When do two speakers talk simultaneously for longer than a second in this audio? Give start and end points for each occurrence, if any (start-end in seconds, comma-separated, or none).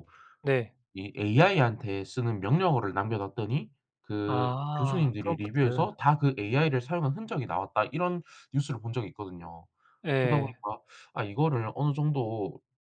4.3-5.8